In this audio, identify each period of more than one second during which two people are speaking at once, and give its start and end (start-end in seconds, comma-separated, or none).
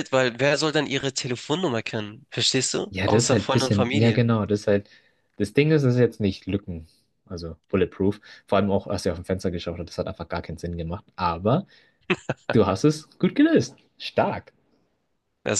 2.9-4.2